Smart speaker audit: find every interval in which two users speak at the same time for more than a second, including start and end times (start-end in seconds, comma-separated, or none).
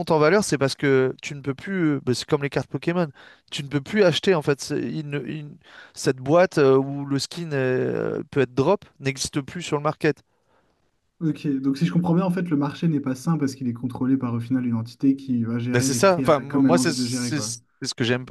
15.7-17.4